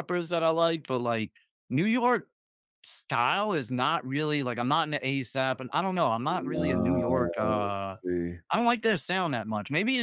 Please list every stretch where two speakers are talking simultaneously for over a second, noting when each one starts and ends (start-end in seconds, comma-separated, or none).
6.3-8.0